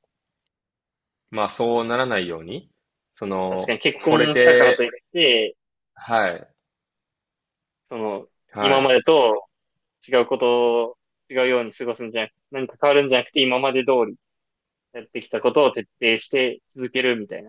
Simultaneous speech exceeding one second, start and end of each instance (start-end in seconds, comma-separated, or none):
3.5-4.9